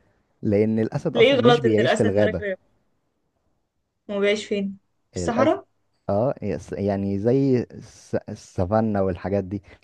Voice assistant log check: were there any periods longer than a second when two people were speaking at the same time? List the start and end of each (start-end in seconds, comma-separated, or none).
1.1-2.4